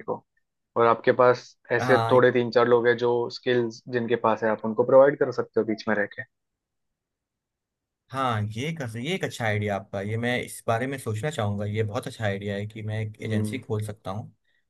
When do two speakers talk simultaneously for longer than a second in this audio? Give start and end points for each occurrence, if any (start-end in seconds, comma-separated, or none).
none